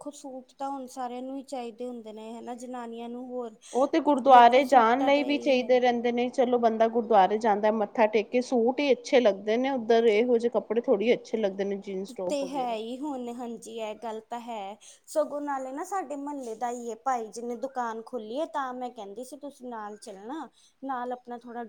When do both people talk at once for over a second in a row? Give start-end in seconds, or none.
4.3-5.8